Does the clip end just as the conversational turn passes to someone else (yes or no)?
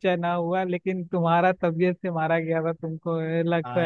yes